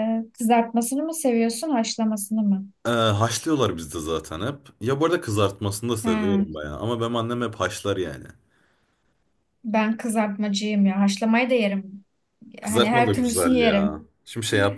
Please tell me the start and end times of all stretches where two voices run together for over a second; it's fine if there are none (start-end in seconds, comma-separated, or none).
12.6-14.1